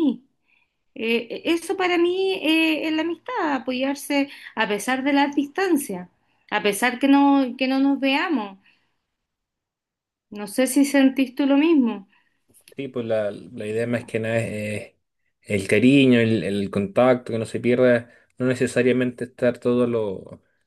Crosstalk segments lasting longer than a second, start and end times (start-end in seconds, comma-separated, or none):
none